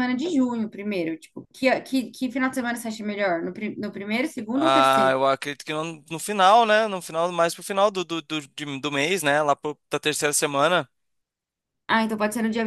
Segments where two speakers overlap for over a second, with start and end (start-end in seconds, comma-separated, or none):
none